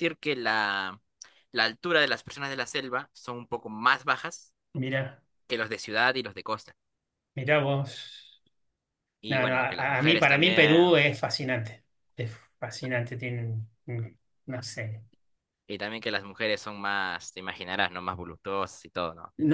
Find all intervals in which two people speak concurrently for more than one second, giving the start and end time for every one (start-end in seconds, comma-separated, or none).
9.3-11.0